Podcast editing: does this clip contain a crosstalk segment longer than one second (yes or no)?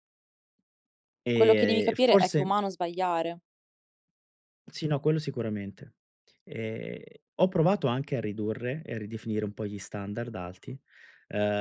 yes